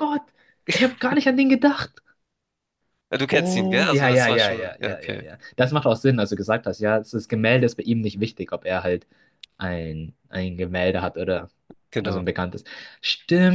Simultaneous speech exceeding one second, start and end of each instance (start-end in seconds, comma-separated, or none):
3.3-5.3